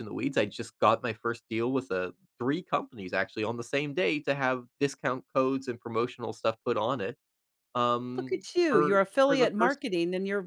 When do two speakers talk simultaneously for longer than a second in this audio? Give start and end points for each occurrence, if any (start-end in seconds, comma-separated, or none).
8.2-9.8